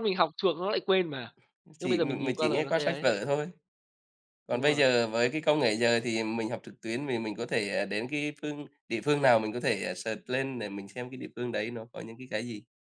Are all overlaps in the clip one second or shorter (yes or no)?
no